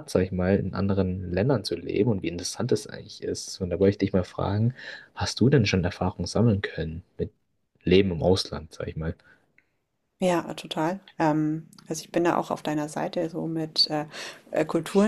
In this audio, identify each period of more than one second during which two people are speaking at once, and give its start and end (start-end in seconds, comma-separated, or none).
none